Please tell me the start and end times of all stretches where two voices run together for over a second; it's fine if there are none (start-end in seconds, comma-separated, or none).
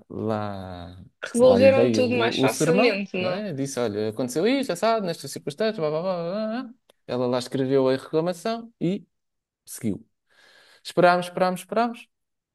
1.2-3.4